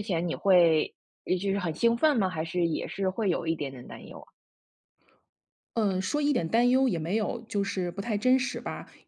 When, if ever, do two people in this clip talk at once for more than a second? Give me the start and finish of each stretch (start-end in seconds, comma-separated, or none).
none